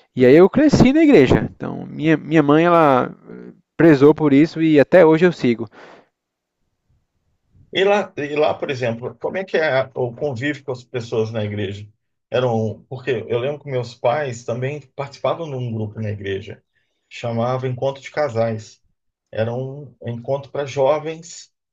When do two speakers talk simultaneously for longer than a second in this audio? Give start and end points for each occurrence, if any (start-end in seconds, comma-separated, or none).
none